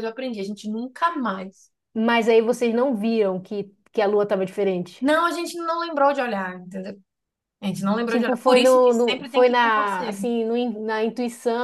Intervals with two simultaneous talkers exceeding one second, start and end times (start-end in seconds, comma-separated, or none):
8.1-10.3